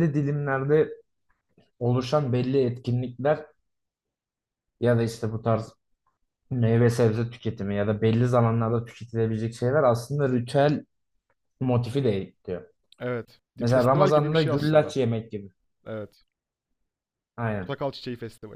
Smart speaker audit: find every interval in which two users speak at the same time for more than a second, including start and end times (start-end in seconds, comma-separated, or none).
13.6-14.9